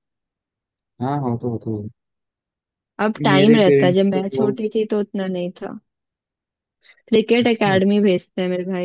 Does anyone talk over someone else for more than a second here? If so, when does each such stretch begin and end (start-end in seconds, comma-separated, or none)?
3.3-4.5